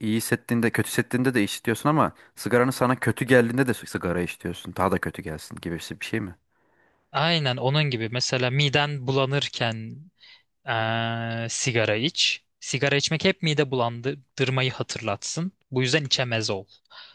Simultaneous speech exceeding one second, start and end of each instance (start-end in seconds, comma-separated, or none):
none